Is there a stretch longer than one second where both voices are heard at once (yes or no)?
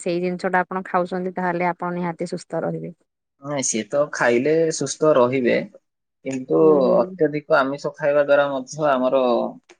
no